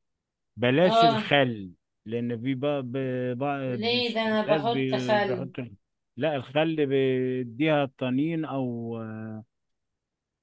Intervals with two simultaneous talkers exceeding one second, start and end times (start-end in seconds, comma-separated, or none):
3.7-5.5